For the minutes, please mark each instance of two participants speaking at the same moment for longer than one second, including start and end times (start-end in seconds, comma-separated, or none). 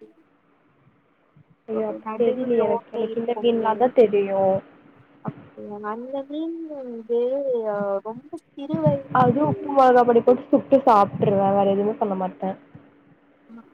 1.8-3.7